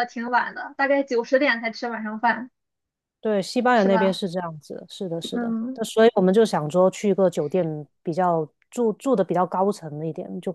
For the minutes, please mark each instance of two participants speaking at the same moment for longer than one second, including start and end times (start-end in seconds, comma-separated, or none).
none